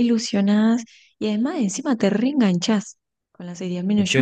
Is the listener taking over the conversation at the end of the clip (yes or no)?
no